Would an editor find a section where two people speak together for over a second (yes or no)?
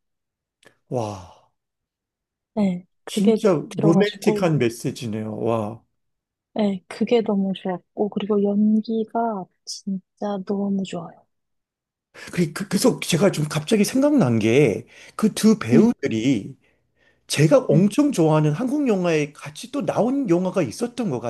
yes